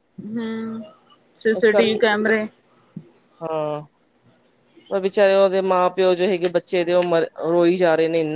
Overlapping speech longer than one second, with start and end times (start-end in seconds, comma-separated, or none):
none